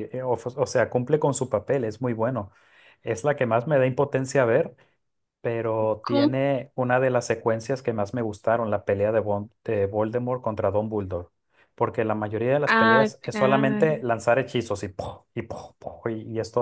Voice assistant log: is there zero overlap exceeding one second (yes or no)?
no